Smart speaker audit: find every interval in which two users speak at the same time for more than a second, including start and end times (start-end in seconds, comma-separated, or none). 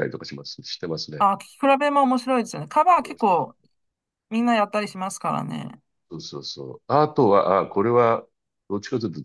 none